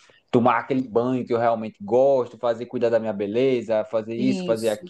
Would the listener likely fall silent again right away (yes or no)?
yes